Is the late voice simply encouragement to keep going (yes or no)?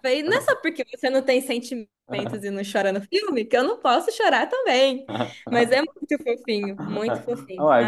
no